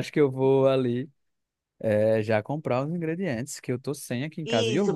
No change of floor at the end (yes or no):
no